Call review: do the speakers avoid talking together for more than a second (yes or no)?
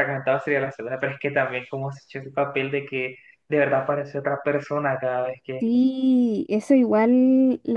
yes